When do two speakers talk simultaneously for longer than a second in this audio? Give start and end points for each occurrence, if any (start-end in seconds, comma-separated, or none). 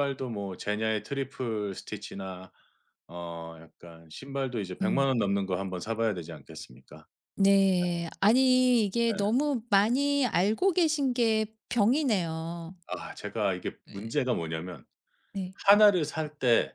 none